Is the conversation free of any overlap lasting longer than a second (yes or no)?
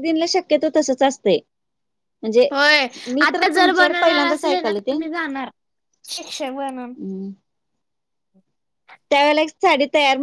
no